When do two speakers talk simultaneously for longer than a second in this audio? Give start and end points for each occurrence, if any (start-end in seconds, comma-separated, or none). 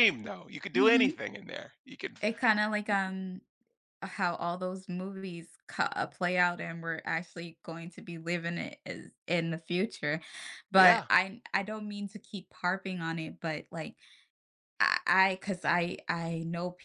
none